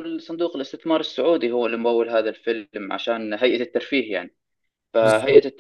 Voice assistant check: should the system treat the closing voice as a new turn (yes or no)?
no